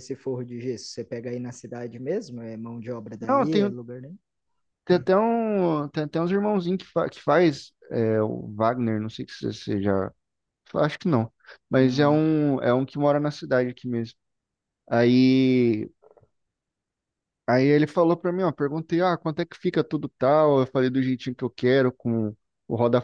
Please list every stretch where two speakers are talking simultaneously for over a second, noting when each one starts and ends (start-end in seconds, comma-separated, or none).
none